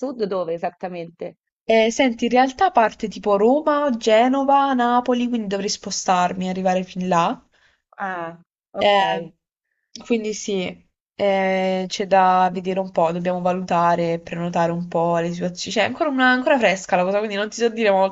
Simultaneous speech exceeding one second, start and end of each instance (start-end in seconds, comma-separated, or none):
none